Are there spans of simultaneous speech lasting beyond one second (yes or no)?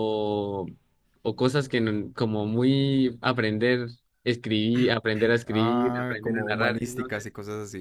yes